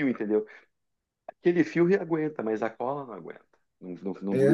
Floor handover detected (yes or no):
yes